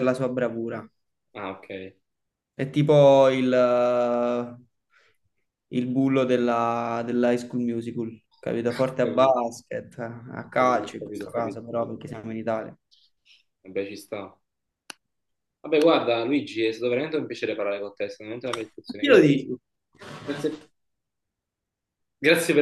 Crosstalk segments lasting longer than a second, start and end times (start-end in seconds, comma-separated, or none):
10.4-12.3